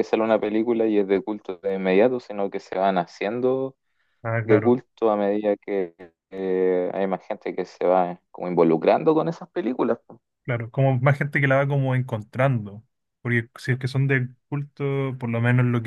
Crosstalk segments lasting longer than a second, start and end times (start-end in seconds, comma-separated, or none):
none